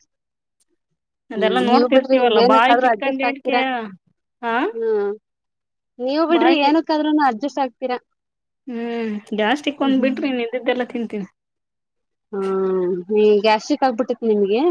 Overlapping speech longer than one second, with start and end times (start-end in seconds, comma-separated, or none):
1.4-3.5